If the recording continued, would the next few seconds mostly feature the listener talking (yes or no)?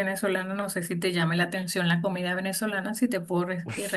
yes